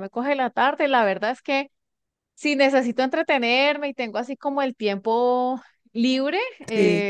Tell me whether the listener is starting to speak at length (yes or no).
no